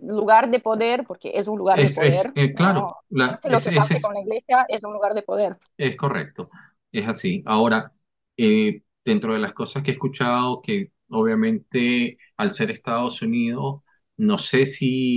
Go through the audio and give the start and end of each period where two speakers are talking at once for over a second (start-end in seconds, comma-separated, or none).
1.7-4.2